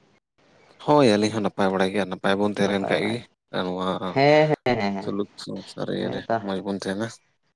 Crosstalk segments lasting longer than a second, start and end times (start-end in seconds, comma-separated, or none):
none